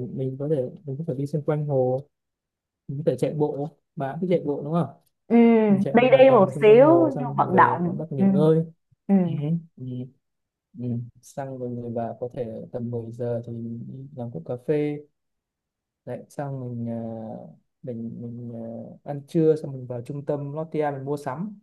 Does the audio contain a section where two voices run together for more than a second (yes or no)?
yes